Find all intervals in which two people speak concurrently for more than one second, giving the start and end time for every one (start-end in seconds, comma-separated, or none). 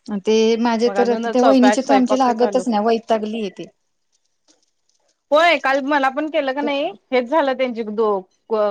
0.8-2.6